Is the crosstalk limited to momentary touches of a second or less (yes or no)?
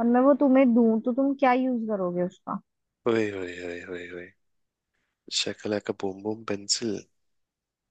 yes